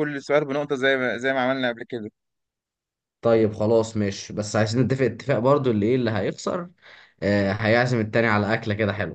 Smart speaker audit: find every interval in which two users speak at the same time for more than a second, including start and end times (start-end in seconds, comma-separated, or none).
none